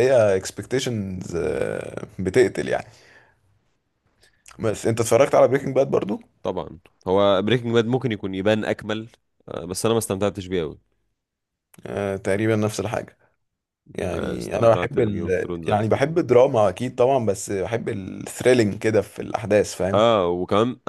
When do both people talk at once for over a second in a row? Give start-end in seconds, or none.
14.0-16.0